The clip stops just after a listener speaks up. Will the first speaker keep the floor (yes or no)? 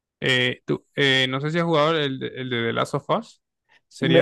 no